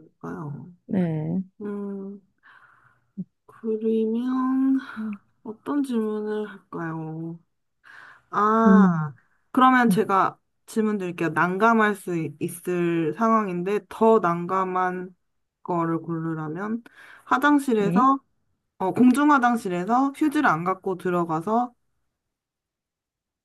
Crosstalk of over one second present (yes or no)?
no